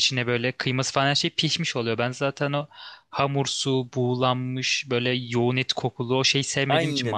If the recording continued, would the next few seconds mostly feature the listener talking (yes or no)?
yes